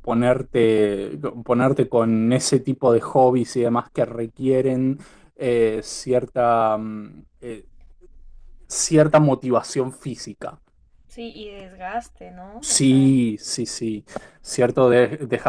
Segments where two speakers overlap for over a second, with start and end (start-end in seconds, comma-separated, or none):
none